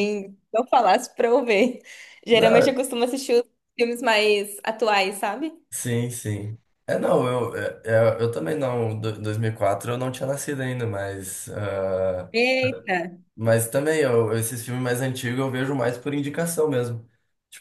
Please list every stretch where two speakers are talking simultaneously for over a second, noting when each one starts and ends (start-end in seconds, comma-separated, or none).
none